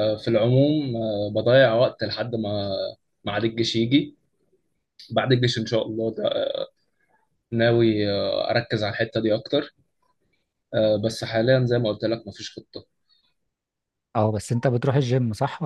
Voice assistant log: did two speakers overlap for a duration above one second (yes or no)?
no